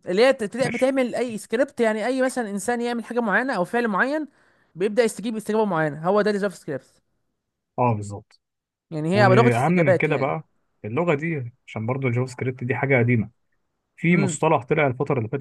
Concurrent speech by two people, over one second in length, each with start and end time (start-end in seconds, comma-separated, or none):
9.1-10.3